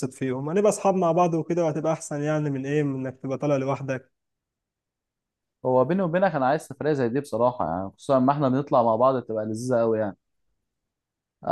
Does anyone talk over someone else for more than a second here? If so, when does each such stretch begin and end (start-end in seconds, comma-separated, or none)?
none